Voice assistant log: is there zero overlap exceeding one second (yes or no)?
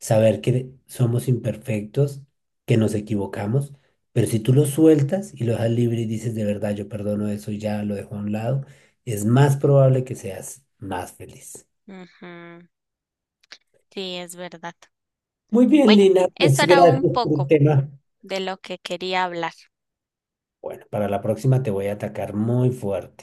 no